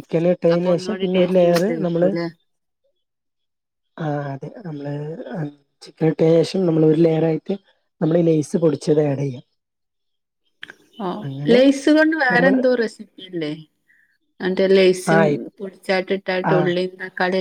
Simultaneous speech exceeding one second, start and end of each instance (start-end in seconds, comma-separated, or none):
0.6-2.1